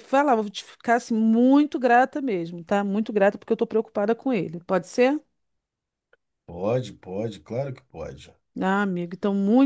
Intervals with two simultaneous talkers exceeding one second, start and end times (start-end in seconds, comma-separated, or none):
none